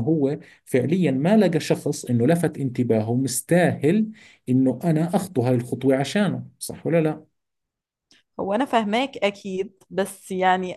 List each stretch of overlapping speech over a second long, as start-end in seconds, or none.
none